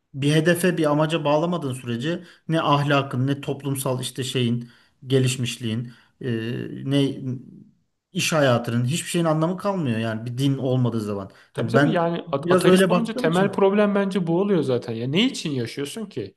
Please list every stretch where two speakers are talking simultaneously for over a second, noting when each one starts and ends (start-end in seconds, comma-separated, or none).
11.5-13.6